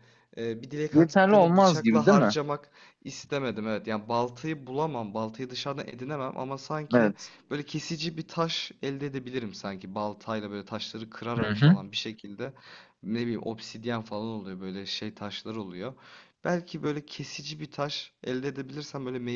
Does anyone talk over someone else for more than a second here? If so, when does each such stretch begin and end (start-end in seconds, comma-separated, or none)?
0.9-2.3